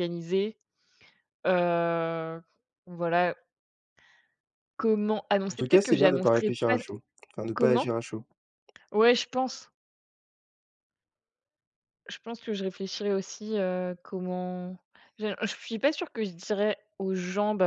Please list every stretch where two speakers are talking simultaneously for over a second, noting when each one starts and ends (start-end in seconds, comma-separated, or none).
5.5-6.8